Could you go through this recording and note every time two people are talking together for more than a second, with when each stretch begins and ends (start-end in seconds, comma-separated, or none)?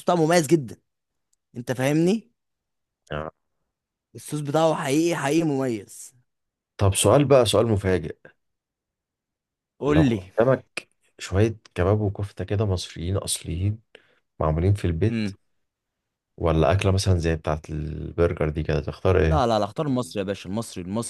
none